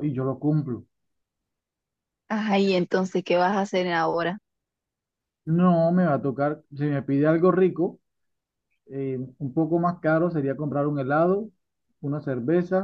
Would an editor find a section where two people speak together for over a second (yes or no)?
no